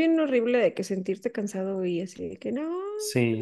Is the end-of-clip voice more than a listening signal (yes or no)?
yes